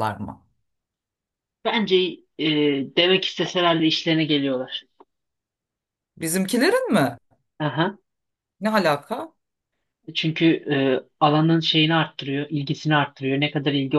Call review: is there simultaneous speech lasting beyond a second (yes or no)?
no